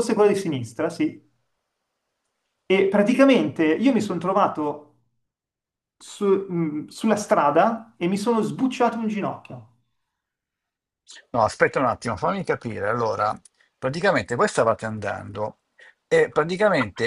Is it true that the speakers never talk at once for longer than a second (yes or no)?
yes